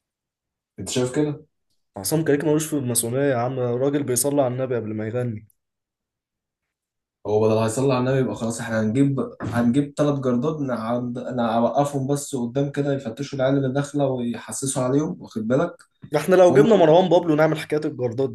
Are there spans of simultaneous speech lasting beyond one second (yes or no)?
no